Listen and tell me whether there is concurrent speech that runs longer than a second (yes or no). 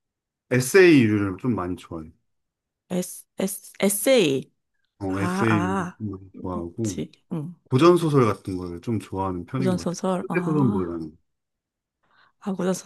yes